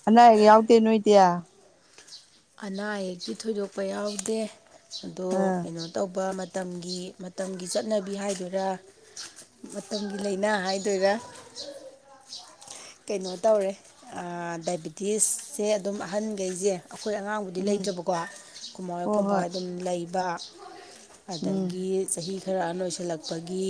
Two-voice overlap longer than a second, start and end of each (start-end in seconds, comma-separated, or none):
none